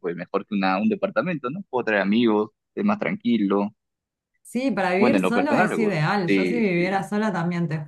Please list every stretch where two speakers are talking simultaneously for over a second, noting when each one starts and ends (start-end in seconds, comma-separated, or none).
5.0-6.8